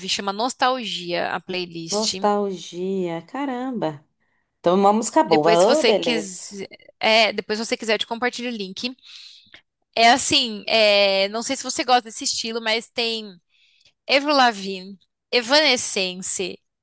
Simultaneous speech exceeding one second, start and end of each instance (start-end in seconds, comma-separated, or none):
5.3-6.6